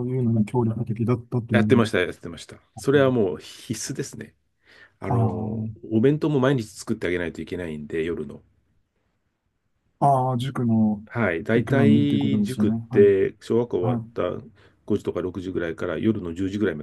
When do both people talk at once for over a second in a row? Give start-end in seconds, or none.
11.5-13.1